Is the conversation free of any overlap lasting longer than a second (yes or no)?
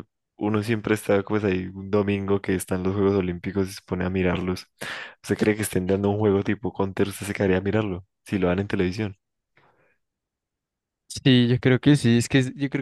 yes